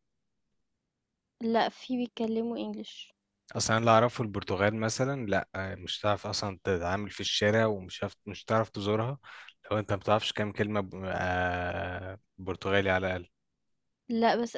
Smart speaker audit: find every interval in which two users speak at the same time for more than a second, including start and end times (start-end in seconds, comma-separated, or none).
none